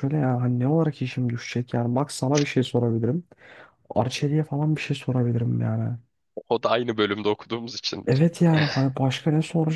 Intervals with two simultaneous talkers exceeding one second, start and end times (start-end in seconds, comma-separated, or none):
none